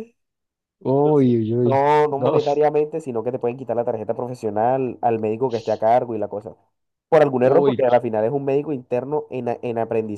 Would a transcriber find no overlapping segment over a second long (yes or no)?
no